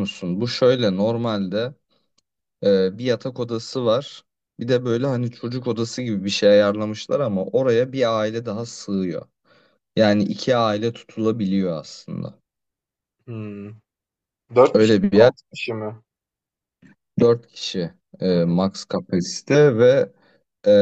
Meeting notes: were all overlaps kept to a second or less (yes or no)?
yes